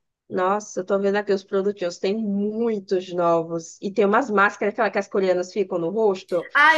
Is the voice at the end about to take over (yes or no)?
yes